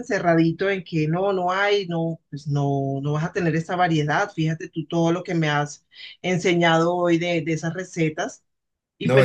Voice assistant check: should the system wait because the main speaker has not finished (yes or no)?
no